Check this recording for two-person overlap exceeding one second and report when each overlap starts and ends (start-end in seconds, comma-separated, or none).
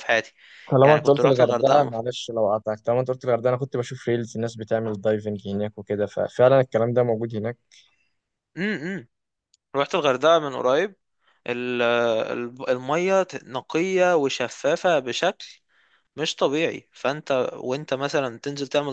0.8-2.0